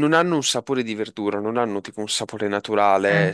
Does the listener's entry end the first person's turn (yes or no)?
no